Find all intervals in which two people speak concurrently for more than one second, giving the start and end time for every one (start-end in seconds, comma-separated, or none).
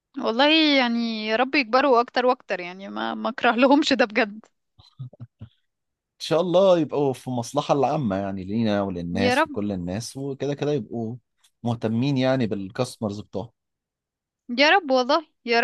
none